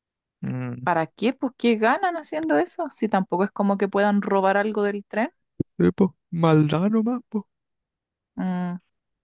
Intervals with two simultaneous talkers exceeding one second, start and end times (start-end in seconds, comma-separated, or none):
none